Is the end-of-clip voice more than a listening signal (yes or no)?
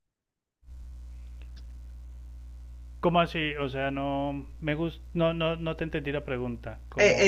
yes